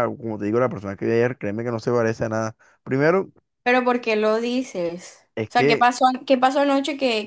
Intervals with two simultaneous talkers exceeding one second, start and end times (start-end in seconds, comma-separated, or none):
none